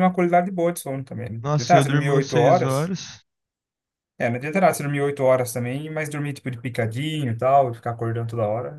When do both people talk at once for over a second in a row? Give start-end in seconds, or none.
1.4-2.9